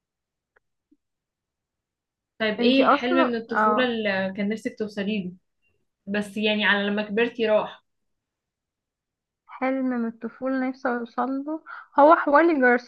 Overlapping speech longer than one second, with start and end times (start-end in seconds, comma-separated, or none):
2.6-3.9